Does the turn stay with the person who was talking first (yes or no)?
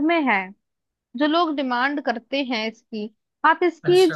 yes